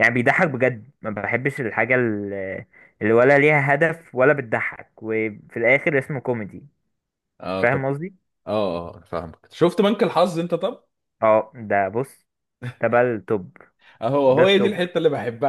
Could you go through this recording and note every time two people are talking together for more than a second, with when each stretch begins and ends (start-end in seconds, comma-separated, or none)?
none